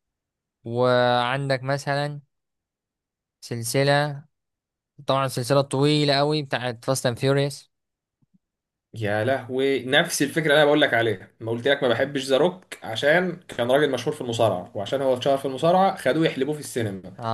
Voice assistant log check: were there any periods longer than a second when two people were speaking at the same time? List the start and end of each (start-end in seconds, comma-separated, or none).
none